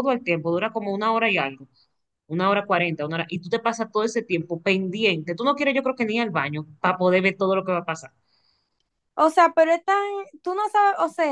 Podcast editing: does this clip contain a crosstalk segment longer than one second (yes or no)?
no